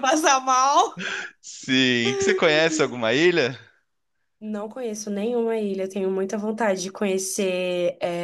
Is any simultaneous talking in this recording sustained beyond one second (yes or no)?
no